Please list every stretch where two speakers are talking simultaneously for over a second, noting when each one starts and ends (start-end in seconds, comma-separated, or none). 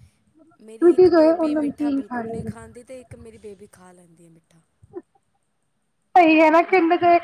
1.1-2.5